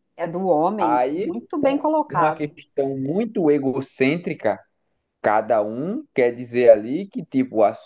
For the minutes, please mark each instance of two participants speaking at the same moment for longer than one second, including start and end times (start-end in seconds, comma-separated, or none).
0.8-2.5